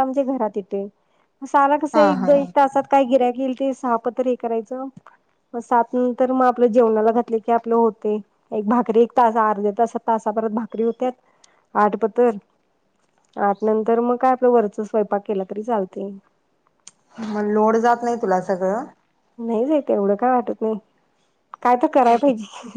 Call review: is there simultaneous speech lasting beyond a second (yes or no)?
no